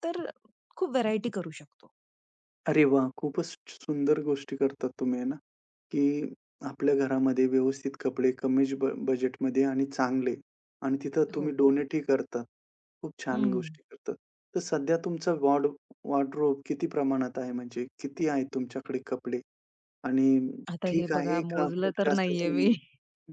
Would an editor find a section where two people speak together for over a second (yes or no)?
yes